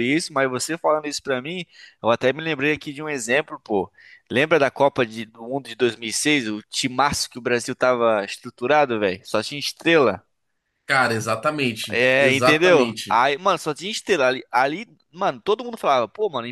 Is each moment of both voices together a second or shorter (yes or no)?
no